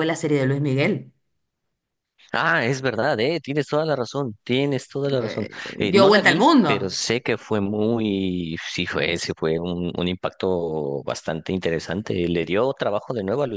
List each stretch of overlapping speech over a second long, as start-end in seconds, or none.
5.2-7.0